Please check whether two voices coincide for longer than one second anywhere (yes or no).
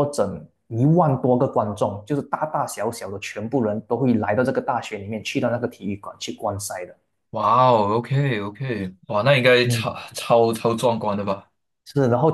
no